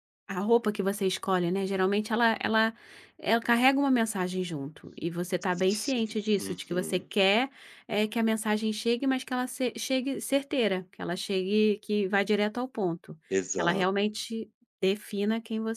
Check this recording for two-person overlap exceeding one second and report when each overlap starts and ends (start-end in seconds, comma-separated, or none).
5.8-7.1